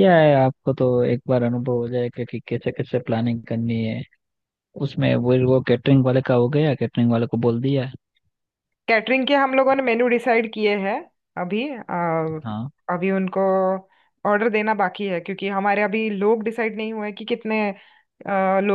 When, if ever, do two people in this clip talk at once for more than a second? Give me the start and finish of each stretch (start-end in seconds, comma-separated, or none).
none